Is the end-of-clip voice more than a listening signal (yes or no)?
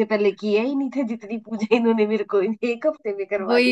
yes